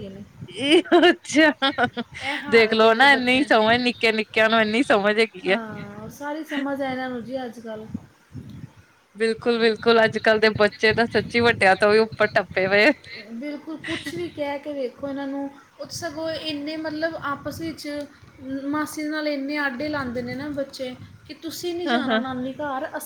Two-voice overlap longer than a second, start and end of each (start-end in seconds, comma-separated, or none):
2.5-3.7